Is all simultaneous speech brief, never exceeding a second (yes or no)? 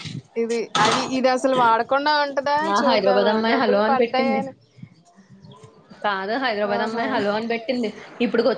no